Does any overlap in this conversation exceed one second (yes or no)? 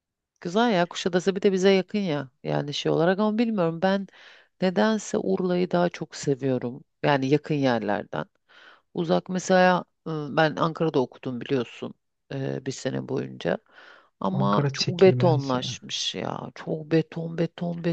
yes